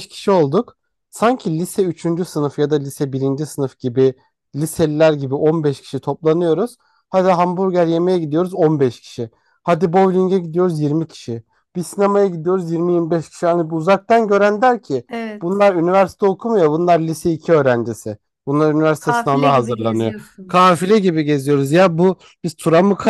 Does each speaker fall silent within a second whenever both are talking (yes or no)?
no